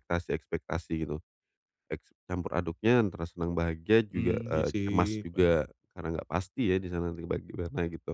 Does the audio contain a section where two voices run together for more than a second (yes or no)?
yes